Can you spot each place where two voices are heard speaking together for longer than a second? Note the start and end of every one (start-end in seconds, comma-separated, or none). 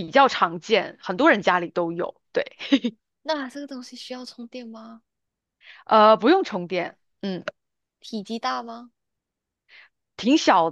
none